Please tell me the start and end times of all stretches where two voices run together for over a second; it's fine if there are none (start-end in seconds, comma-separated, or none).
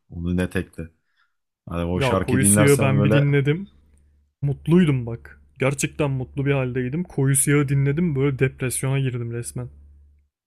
1.9-3.3